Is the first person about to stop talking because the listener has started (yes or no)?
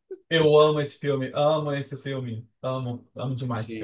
yes